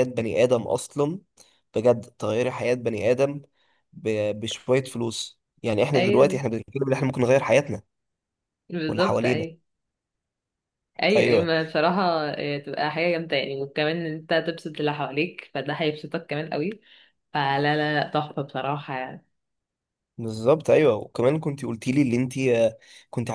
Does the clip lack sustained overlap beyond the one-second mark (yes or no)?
yes